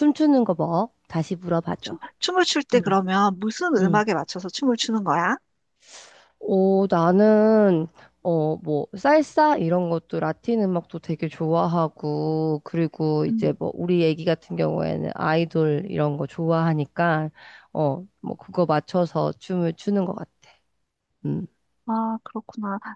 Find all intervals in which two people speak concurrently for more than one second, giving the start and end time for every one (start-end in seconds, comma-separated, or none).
none